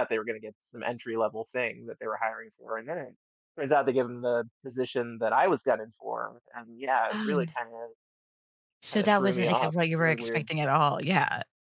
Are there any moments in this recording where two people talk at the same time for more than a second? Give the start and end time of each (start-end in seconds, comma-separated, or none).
8.9-10.5